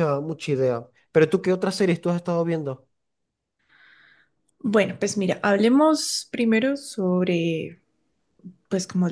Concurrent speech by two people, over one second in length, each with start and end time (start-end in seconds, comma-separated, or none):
none